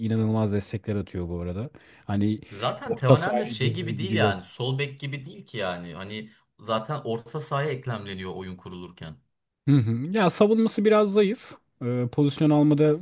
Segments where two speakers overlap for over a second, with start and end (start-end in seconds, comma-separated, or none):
2.9-4.3